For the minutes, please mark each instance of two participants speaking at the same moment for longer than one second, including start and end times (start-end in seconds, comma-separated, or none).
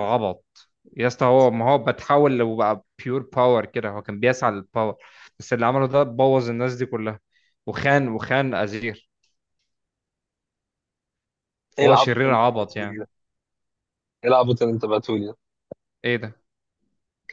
11.8-13.0